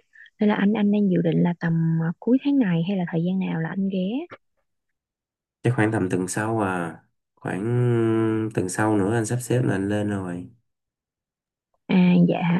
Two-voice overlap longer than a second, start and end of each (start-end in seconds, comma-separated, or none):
none